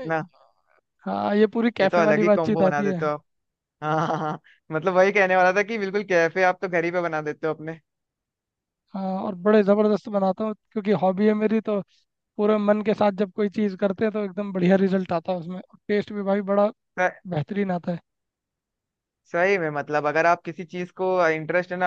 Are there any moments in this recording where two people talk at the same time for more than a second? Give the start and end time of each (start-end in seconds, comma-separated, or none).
1.8-3.0